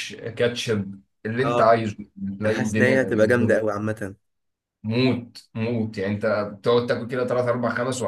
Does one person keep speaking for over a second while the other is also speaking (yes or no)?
yes